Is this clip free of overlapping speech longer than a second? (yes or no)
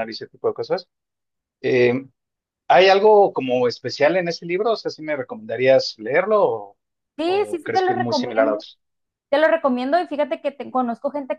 no